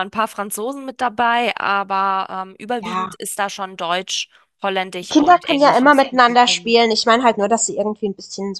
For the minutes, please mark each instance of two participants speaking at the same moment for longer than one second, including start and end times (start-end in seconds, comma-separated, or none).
5.1-6.8